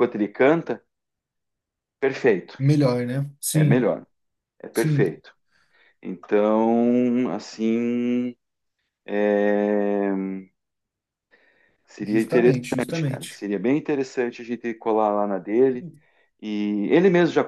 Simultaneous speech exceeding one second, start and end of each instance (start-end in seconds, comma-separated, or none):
12.0-13.4